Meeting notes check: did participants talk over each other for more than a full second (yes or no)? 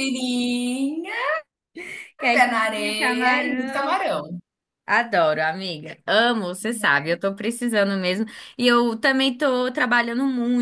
yes